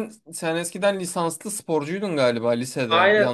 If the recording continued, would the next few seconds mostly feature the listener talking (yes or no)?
yes